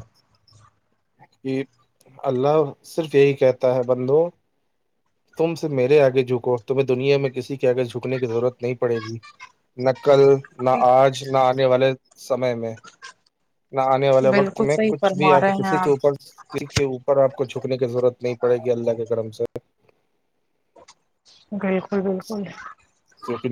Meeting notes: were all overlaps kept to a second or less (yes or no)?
no